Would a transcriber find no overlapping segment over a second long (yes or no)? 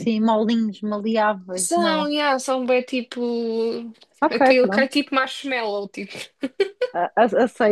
yes